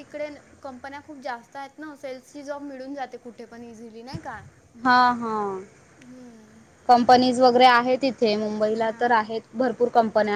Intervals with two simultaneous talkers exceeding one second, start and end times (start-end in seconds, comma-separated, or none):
none